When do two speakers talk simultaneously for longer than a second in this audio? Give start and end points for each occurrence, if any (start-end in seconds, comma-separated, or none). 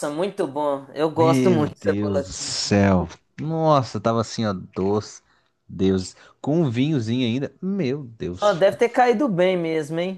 1.1-2.6